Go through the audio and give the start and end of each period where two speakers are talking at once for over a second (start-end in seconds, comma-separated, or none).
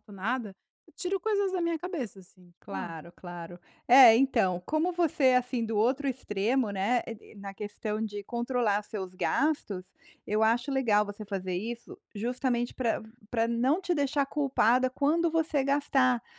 none